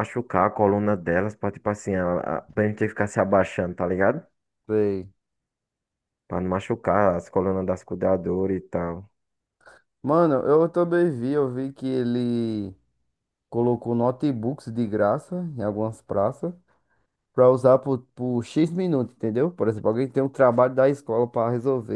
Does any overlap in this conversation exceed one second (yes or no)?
no